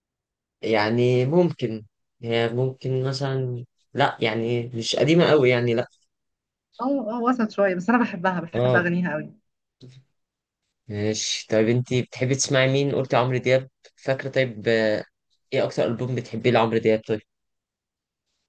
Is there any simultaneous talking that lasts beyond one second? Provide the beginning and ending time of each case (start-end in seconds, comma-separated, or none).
none